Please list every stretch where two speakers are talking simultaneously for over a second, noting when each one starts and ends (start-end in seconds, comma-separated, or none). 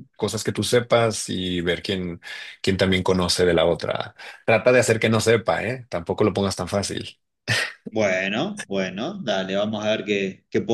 none